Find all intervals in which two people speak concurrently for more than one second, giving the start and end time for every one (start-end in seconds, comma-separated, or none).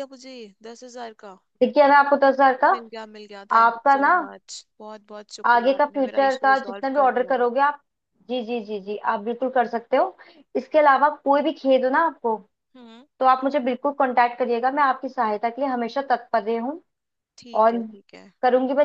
5.5-7.4